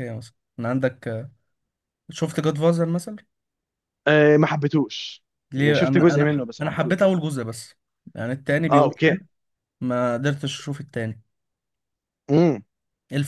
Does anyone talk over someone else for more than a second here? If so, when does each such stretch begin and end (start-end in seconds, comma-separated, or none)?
5.5-7.2